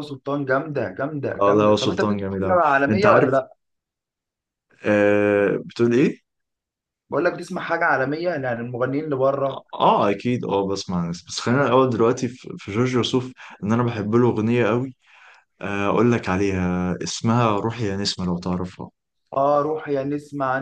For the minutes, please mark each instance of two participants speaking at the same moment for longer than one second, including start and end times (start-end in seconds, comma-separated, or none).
1.4-3.3